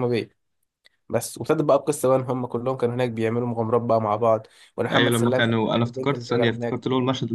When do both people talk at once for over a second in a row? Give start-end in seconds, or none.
4.9-6.8